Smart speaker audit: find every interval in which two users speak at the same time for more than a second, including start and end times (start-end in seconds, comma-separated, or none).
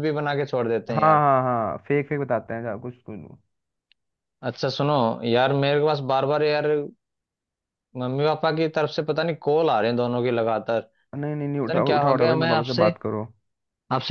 11.3-12.9